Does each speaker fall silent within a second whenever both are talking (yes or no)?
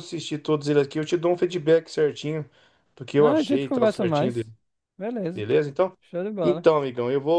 no